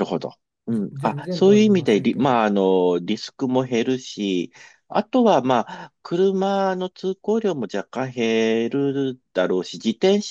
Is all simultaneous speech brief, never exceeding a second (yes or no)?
no